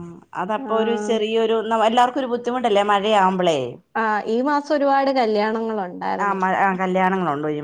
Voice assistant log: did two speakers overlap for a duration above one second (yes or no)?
no